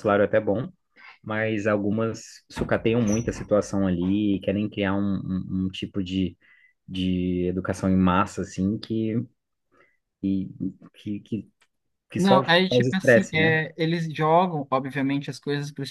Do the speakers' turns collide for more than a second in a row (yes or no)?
yes